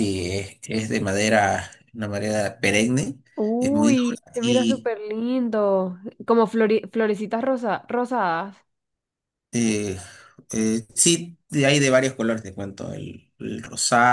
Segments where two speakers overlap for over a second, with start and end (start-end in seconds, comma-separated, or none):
3.6-4.9